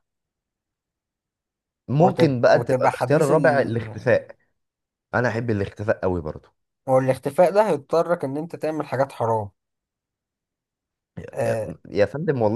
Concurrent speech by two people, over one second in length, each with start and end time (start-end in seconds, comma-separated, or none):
2.0-3.3